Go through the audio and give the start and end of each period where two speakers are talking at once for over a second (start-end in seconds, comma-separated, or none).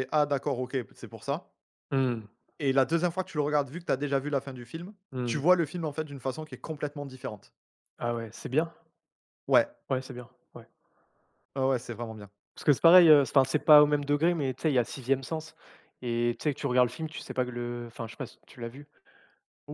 none